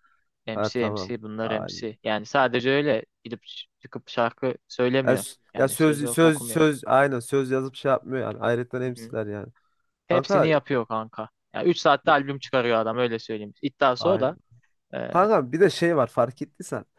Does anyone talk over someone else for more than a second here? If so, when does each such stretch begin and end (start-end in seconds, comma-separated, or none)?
0.5-1.9, 5.1-6.6